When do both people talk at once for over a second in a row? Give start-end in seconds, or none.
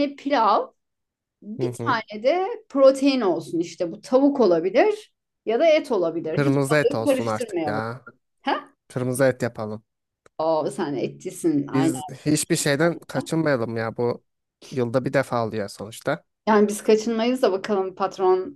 6.3-7.8